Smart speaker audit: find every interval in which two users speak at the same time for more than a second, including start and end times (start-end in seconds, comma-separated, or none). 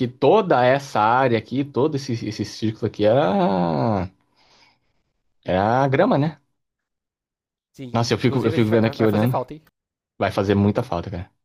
7.9-9.4